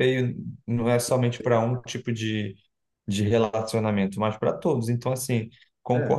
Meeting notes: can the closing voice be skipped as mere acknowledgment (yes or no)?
yes